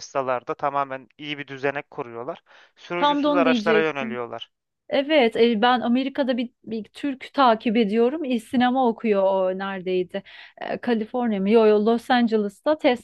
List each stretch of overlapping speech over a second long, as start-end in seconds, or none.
3.0-4.2